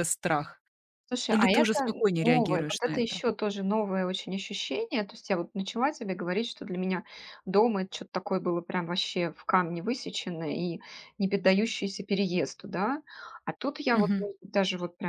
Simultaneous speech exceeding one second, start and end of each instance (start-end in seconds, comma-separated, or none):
1.3-3.2